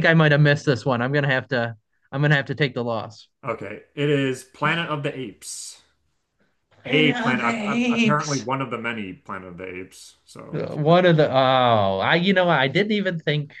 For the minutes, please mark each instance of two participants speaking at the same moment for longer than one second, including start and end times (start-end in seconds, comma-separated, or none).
6.8-8.5